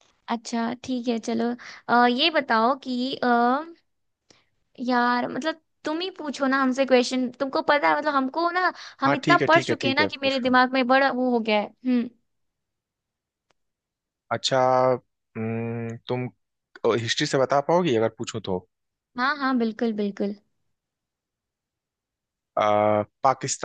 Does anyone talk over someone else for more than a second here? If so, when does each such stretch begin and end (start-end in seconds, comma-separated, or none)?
9.1-10.6